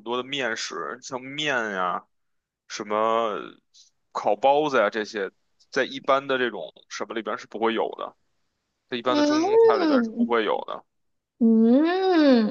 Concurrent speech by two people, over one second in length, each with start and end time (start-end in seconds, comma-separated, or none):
9.1-10.3